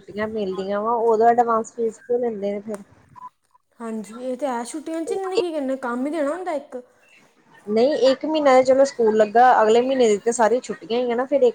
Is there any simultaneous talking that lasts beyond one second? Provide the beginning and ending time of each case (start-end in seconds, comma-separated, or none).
none